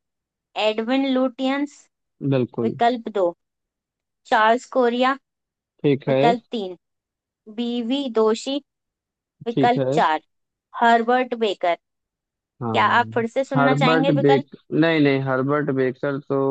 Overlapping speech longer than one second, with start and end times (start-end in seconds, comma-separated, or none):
12.6-14.5